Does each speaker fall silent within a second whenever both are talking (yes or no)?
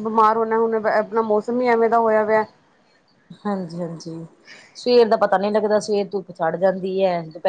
yes